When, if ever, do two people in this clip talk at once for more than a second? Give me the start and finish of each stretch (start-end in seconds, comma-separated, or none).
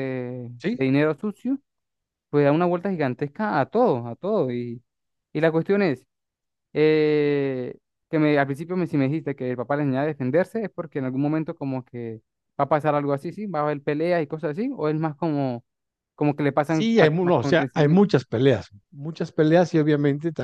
16.6-18.1